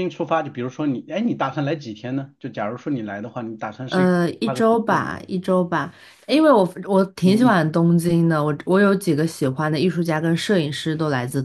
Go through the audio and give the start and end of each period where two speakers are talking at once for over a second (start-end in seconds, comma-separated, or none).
3.9-5.3